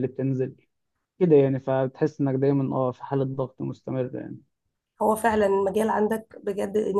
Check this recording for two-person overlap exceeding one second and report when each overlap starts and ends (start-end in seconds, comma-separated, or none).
none